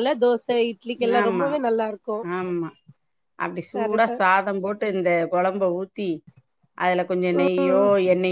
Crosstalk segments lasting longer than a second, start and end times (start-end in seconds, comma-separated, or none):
none